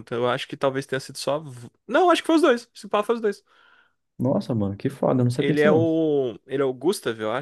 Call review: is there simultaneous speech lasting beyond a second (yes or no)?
no